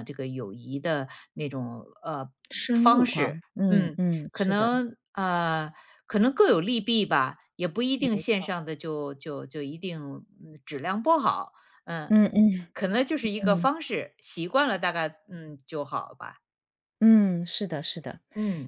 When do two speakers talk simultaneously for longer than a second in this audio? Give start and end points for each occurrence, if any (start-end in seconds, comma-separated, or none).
2.7-4.7